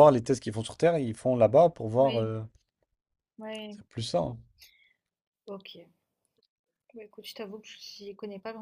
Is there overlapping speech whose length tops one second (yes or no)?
no